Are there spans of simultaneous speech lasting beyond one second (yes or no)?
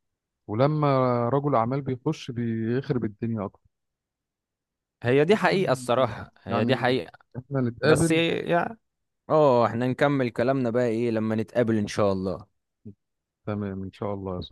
no